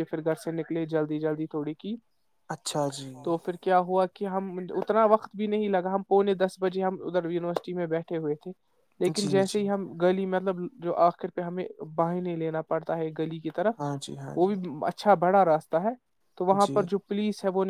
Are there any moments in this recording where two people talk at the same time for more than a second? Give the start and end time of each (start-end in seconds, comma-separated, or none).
none